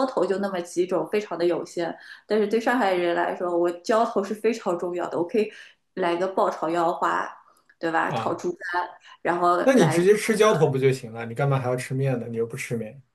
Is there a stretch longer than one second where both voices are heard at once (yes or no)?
no